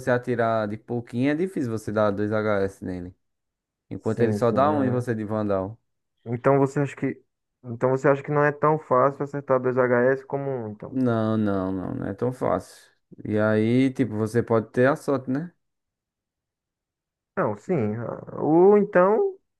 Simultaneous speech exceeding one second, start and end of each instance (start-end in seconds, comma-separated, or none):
4.0-5.2